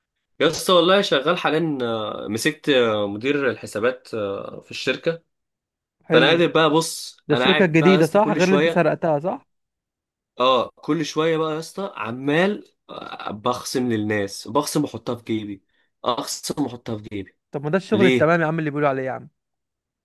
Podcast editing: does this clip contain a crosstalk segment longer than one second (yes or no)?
yes